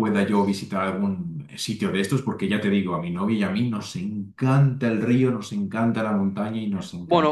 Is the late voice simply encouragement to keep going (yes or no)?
no